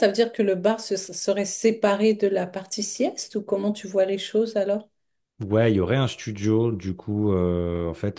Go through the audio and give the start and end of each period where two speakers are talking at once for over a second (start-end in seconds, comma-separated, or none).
none